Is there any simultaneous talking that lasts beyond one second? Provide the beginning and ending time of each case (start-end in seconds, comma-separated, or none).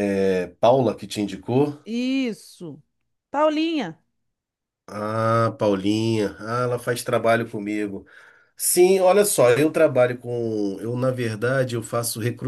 none